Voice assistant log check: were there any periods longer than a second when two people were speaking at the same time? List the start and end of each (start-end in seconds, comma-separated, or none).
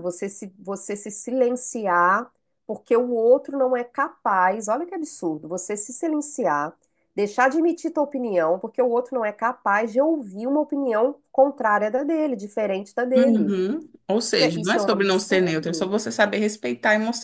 14.4-15.9